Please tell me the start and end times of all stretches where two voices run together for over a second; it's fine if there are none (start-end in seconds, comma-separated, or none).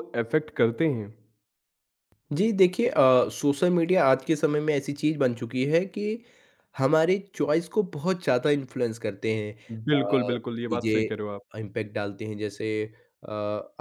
9.7-11.4